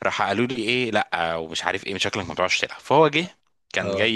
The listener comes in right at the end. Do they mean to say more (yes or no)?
no